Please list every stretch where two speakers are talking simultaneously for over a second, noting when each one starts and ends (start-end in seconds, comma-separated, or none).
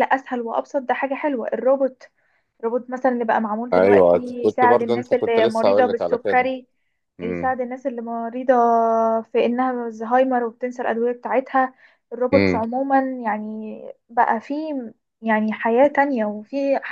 3.7-6.5